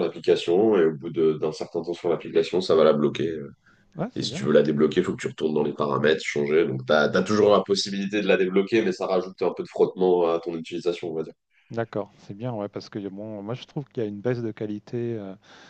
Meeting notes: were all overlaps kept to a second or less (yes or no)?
yes